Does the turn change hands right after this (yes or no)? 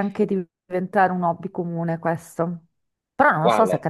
no